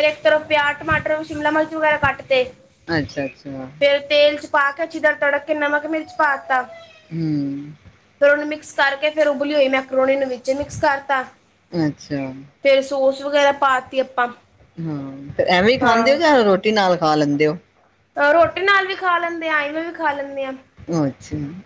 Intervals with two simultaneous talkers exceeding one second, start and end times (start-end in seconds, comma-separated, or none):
none